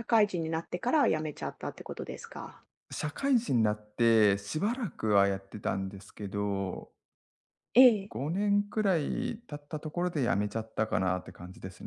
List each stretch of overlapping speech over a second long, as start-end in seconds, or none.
none